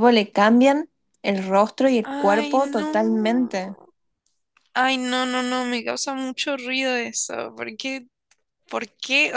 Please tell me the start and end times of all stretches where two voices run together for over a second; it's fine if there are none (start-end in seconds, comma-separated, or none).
2.0-3.6